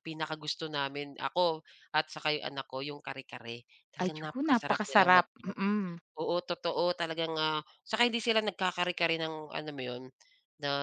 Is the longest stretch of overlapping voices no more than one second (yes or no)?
no